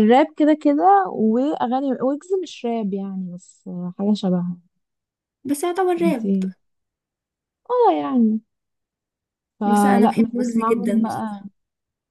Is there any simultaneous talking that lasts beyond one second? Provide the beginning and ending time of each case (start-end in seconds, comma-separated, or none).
9.6-11.4